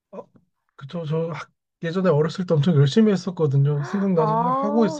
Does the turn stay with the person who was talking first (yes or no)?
no